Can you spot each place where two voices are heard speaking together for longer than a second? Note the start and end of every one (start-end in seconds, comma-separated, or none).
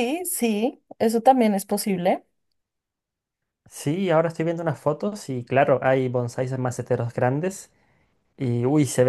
none